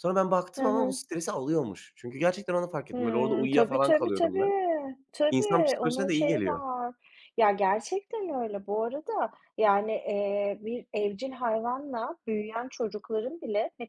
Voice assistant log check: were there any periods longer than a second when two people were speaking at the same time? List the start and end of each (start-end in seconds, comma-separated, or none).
2.9-4.5, 5.3-6.6